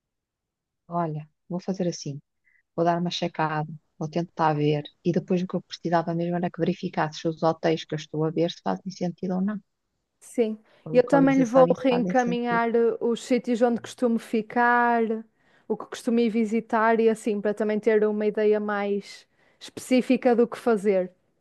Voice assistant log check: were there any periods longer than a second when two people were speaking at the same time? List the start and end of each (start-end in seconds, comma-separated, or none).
10.9-12.6